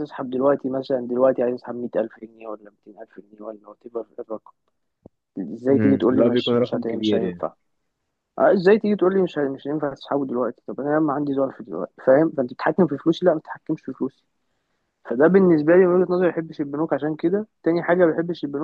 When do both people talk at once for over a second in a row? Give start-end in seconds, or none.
5.7-7.5